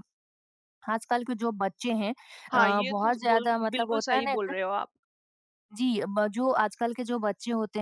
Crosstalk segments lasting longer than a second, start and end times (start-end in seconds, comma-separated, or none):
2.5-4.5